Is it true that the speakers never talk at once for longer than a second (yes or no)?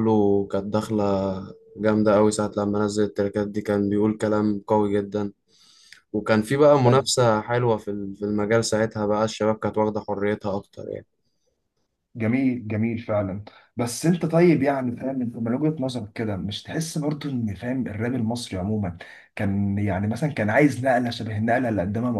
yes